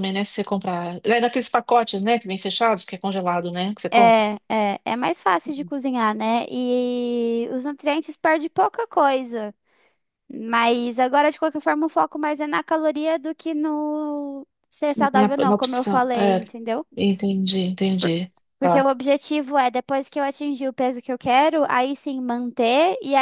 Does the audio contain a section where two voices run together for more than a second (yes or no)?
yes